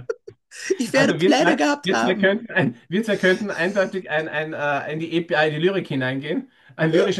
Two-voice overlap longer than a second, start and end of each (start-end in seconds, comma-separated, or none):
0.9-2.4